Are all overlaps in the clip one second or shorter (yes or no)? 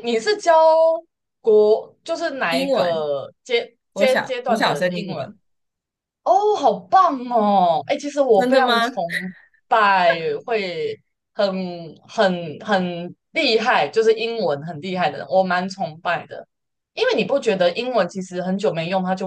no